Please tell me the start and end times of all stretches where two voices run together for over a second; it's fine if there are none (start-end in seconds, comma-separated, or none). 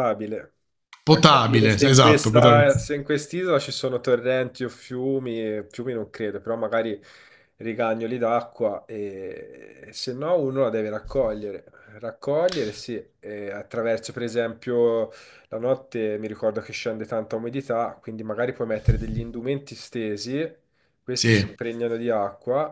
1.1-2.7